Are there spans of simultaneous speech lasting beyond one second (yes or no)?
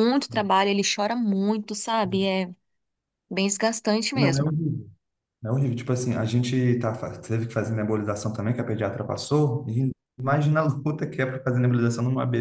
no